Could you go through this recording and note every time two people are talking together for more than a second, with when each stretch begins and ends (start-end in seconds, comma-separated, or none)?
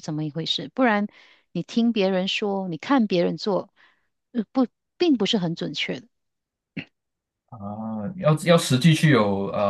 none